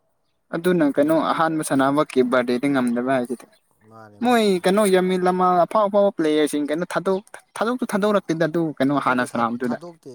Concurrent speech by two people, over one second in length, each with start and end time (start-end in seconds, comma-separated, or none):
none